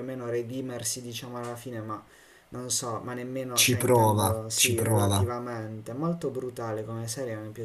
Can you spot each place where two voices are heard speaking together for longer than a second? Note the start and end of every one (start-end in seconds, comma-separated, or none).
3.5-5.3